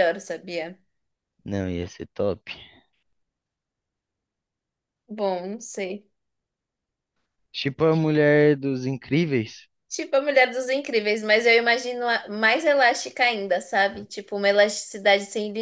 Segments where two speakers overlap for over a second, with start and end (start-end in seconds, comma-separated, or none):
none